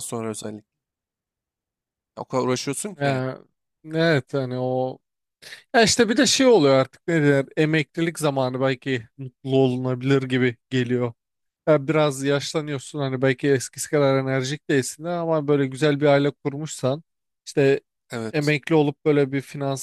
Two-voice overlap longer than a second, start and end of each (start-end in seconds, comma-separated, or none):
none